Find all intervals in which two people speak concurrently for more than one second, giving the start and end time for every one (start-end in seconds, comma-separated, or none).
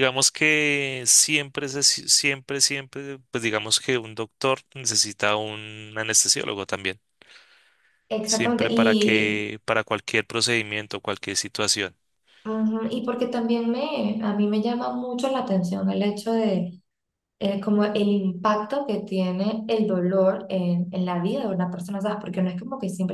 8.2-9.5